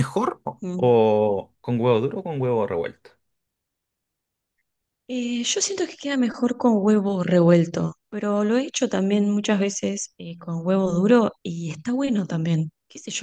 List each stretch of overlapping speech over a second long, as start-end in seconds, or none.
none